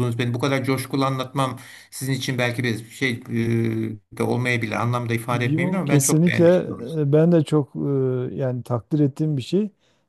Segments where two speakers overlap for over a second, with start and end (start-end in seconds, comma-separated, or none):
5.3-7.0